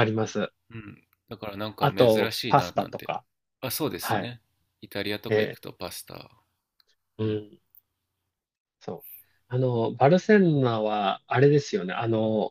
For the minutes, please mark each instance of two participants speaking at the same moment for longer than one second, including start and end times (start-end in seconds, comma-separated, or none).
1.8-3.1